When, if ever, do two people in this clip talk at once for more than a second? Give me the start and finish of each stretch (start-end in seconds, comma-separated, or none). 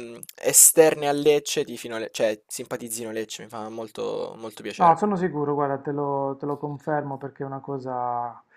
none